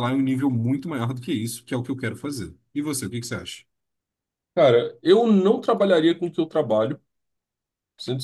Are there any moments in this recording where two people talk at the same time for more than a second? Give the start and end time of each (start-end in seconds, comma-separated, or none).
none